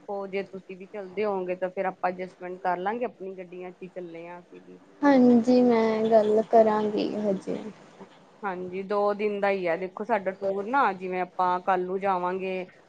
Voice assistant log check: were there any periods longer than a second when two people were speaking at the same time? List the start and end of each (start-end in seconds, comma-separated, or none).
none